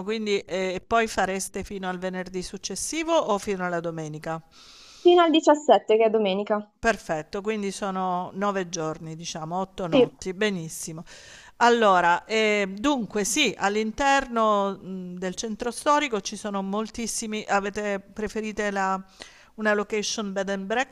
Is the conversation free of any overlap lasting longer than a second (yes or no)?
yes